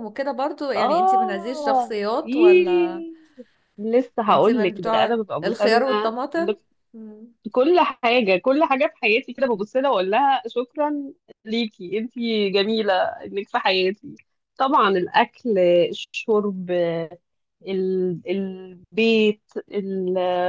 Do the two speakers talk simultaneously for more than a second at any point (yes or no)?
yes